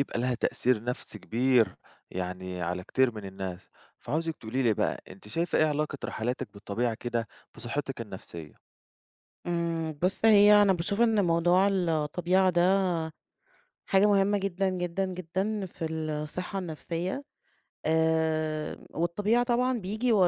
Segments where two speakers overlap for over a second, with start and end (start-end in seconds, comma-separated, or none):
none